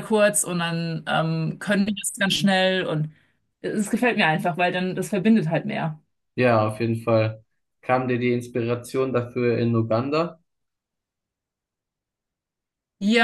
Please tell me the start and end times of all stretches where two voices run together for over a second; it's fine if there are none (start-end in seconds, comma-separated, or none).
none